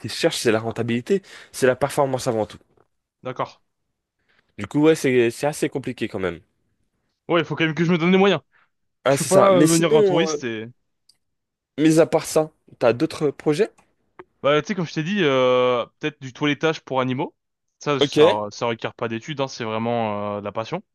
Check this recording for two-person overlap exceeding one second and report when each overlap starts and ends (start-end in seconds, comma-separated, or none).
9.1-10.4